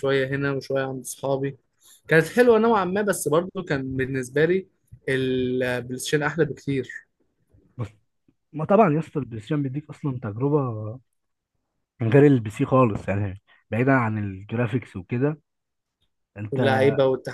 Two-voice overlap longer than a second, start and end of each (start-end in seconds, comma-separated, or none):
none